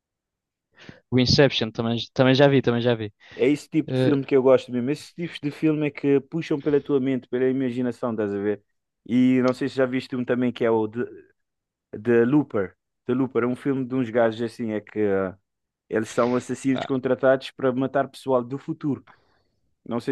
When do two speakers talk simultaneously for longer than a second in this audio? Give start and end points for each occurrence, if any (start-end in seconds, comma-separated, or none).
none